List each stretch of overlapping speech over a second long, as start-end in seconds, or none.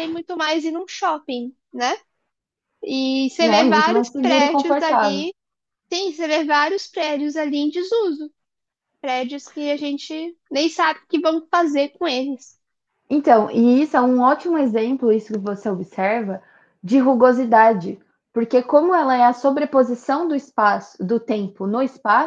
3.4-5.3